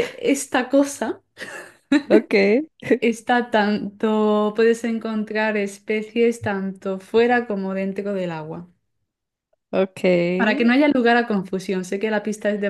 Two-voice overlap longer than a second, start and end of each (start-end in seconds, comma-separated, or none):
none